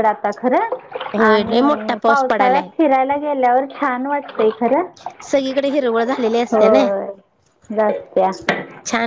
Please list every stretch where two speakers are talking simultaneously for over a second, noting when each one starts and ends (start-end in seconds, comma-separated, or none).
1.3-2.7